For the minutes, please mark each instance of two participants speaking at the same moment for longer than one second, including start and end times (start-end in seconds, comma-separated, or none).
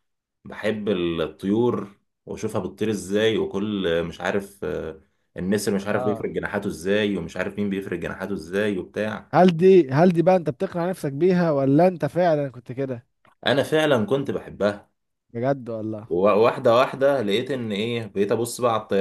none